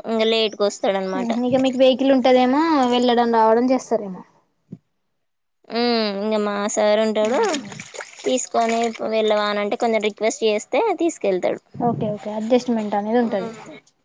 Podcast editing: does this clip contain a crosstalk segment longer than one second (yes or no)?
no